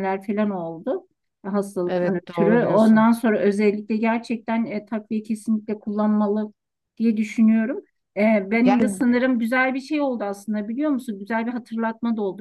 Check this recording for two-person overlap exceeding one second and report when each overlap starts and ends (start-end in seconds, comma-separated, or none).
1.9-3.1